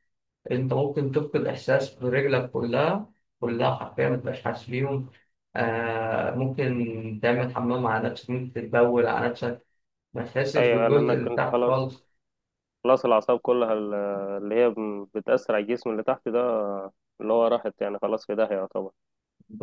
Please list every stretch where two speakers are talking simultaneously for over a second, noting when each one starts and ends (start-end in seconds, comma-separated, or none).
10.6-11.9